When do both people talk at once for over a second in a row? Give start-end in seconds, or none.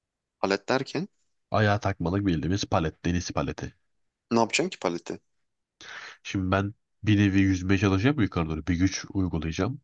none